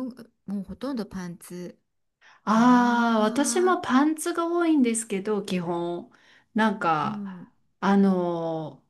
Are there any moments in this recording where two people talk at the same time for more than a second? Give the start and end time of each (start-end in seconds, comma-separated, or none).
2.5-3.8